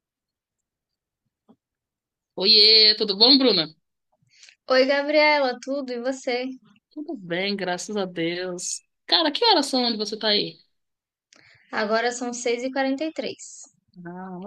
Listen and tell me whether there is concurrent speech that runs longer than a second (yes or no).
no